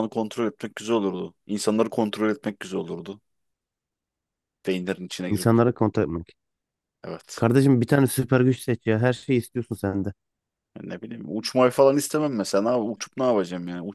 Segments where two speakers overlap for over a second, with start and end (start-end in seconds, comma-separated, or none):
none